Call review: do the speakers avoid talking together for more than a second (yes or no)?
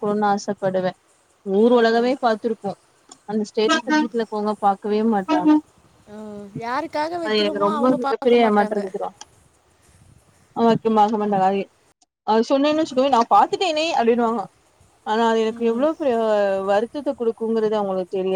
no